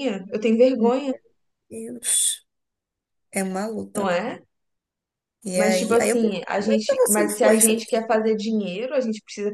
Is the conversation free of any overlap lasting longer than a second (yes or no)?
no